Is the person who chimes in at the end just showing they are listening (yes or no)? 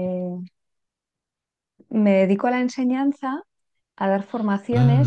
yes